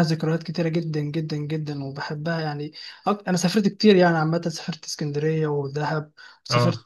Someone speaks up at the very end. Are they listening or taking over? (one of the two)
listening